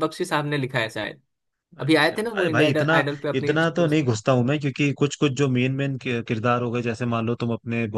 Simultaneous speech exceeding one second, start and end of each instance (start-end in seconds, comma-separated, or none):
1.8-4.1